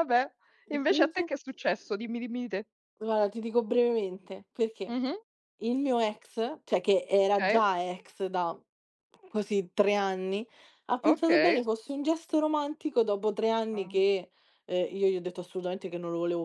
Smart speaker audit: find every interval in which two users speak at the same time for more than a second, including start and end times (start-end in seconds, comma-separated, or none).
none